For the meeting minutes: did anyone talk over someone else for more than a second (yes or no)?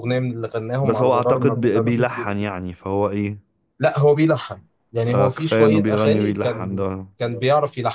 yes